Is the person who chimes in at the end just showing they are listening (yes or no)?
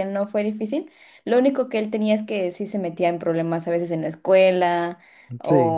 yes